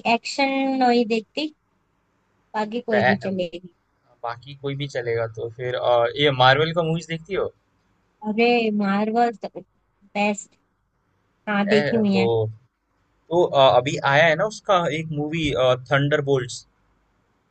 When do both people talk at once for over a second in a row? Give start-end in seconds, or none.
none